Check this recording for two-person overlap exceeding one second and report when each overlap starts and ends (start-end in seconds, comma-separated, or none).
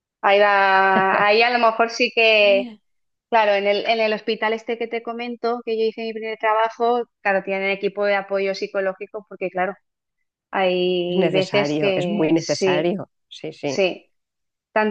11.1-13.0